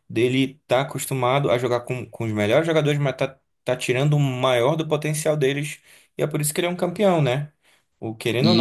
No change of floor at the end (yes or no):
yes